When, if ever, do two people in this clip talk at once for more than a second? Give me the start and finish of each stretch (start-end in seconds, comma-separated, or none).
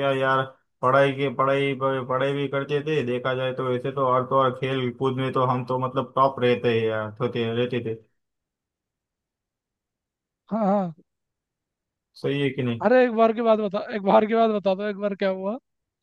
none